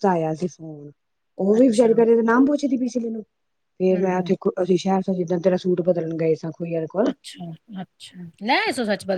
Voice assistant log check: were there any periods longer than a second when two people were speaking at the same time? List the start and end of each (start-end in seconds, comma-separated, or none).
none